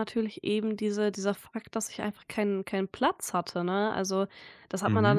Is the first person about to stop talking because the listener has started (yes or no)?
no